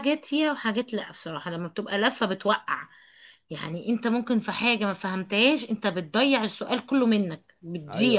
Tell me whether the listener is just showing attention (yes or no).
no